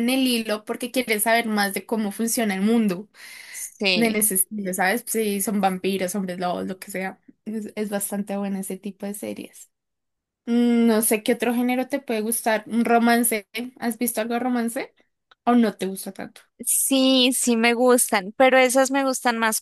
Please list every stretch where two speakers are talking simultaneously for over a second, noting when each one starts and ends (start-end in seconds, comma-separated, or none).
none